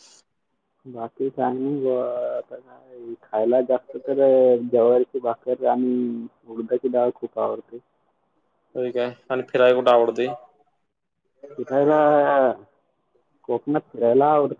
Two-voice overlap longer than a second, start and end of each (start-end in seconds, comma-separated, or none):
none